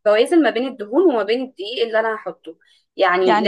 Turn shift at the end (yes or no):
no